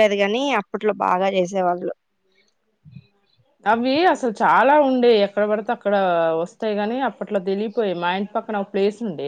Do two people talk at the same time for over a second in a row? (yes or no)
no